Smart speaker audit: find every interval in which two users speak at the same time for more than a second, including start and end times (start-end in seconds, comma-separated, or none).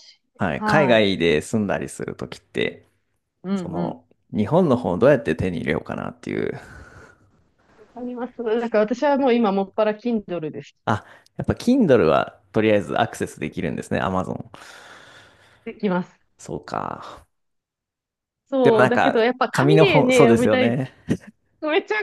18.6-20.8